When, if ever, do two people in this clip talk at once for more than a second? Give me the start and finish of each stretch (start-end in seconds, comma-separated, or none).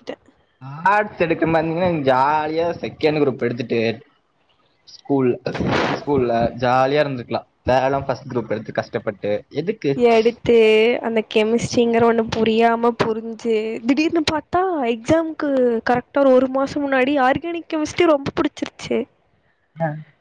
none